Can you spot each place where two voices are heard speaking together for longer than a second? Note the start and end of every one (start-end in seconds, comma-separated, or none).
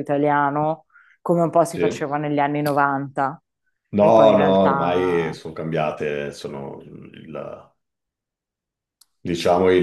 4.0-5.4